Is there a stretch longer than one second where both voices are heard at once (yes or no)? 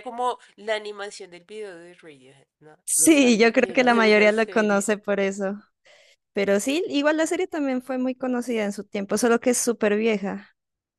yes